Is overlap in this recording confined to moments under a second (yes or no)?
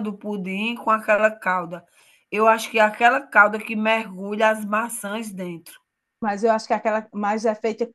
yes